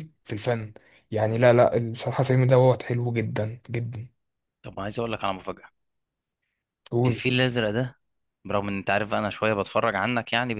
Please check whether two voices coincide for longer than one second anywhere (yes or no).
no